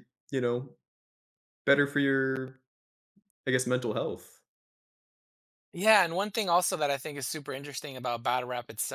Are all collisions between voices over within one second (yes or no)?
yes